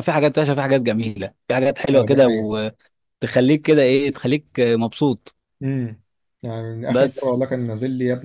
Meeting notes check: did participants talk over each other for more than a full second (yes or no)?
no